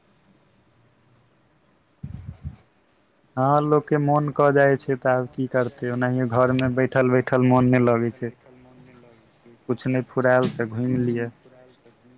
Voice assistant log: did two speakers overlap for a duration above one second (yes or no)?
yes